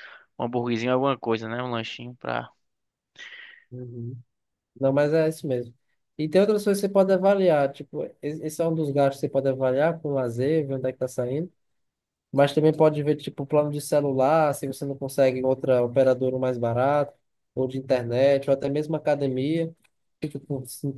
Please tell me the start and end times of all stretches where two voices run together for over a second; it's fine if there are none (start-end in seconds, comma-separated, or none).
none